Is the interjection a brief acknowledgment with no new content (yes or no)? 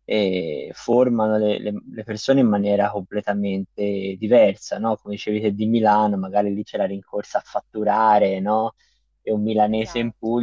yes